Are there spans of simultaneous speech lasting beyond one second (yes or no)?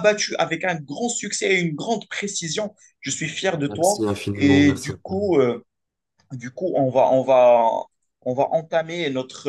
yes